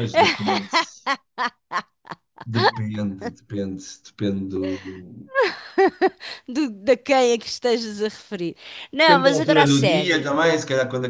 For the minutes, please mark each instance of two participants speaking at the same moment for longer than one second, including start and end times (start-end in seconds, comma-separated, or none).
9.1-10.4